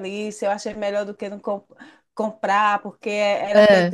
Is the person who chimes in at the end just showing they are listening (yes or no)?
yes